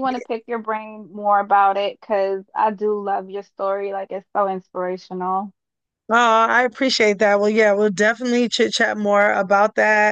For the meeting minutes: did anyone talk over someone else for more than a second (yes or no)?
no